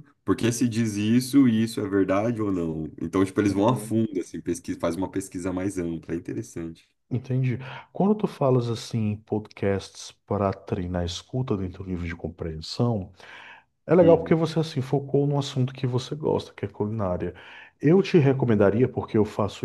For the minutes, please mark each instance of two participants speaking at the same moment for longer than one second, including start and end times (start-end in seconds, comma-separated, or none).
none